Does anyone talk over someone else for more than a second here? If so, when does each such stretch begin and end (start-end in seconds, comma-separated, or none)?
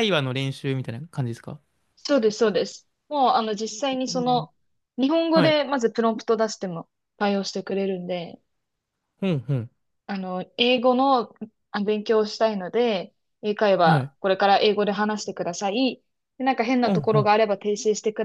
none